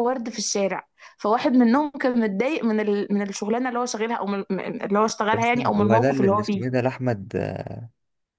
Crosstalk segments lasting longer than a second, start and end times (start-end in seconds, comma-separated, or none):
5.3-6.6